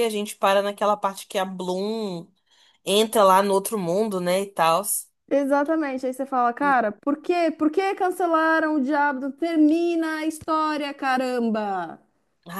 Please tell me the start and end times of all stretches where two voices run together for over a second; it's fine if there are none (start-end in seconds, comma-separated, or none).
none